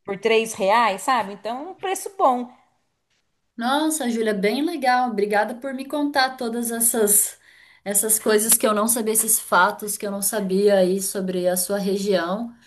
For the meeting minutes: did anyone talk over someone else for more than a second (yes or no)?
no